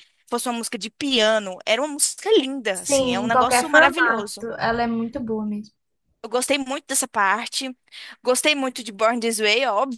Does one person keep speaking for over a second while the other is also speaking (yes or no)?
yes